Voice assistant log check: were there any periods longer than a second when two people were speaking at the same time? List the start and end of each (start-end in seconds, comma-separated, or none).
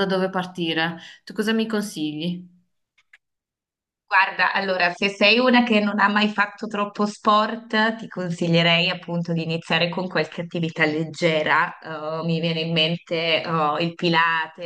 none